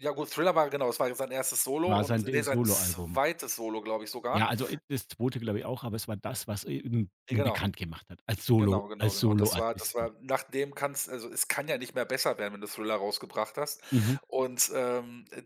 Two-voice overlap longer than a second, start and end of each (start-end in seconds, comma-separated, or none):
1.9-3.2, 8.6-10.1